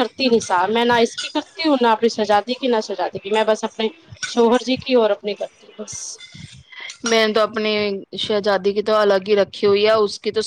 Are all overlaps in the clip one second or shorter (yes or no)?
yes